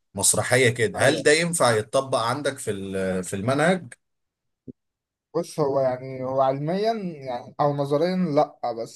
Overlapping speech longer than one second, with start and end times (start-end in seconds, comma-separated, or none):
none